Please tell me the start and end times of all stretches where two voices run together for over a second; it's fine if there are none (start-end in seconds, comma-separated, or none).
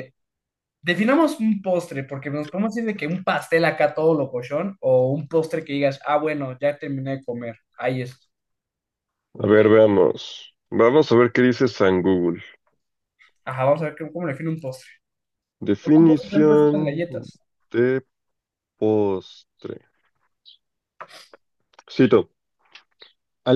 15.8-17.0